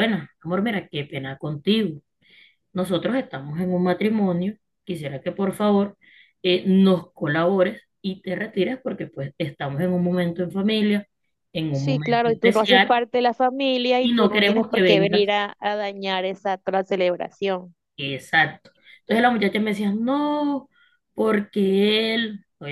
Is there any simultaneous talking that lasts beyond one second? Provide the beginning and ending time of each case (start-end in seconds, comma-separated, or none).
11.7-13.0, 14.0-15.3